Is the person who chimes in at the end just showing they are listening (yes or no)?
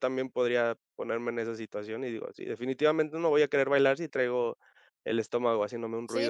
no